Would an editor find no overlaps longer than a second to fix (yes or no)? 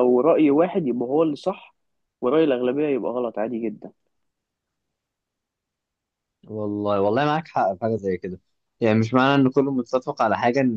yes